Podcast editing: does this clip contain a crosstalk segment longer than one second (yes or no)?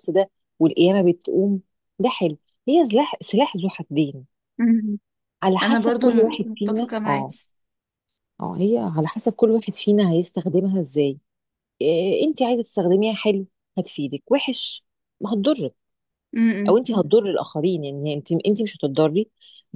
yes